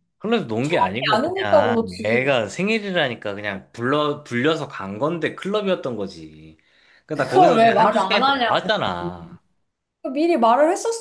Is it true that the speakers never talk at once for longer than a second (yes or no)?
no